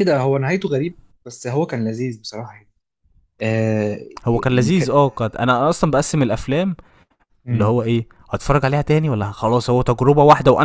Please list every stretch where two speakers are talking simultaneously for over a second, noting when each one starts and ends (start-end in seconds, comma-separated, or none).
none